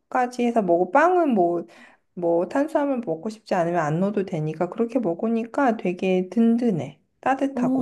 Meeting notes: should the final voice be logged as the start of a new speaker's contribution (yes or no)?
yes